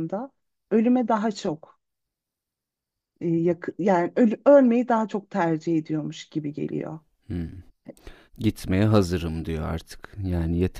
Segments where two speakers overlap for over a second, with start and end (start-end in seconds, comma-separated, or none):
none